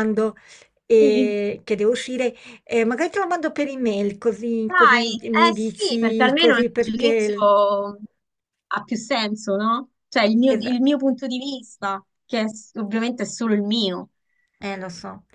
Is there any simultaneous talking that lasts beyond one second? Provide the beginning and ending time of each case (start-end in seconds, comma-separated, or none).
4.7-7.5